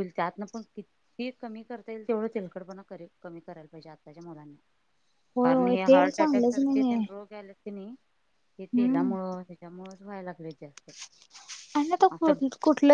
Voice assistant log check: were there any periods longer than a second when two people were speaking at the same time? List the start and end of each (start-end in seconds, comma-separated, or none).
5.4-7.0